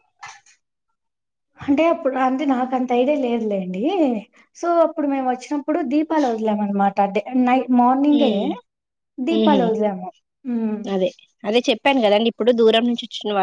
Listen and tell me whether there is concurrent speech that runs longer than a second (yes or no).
no